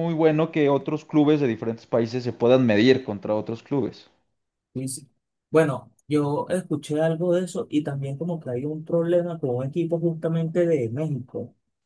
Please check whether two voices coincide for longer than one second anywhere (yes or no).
no